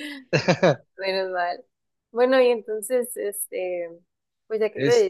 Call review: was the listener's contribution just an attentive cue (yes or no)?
yes